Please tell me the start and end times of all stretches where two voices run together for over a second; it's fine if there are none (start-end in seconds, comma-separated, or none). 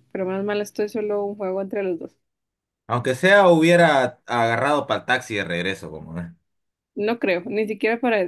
none